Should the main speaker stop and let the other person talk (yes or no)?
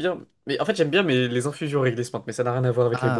yes